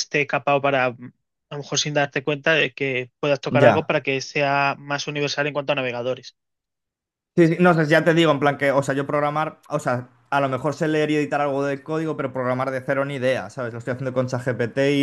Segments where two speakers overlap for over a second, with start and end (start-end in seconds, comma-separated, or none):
none